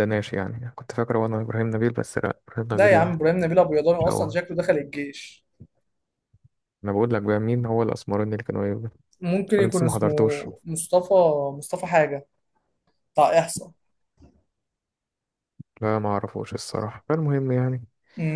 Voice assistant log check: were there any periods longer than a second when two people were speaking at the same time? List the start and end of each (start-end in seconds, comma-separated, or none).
none